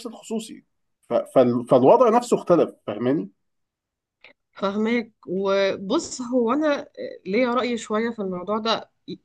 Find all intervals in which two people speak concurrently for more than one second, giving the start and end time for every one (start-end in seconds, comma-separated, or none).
none